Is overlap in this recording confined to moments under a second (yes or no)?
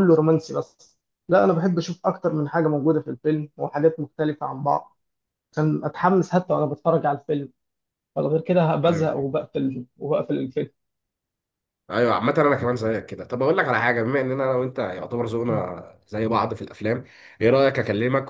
yes